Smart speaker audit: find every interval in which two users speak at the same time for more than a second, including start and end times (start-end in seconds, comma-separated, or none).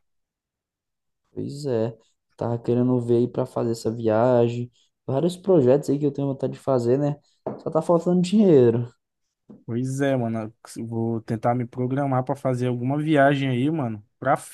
none